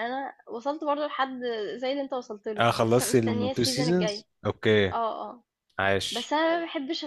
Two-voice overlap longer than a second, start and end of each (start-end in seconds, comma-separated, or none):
2.6-4.2